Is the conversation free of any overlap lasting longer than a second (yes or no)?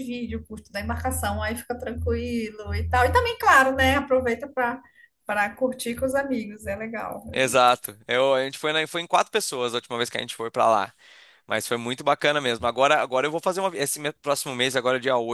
yes